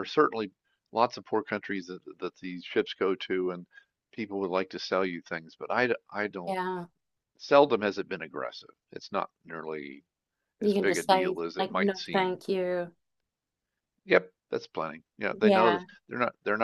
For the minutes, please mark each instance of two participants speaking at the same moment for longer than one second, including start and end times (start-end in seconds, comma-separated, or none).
10.6-12.4